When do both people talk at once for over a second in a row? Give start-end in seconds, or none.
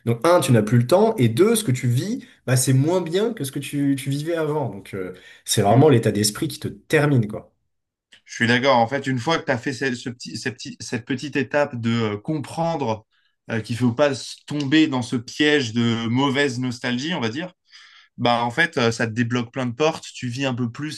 none